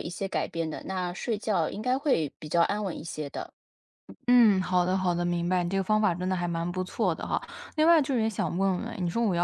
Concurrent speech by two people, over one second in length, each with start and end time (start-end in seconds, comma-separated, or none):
none